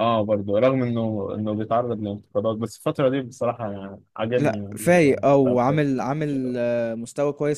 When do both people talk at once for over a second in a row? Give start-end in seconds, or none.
4.4-5.8